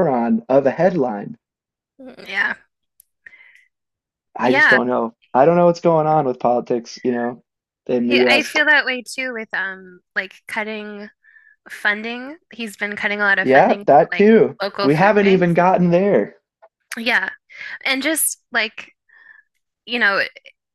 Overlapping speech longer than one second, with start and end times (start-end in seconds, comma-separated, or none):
13.4-15.5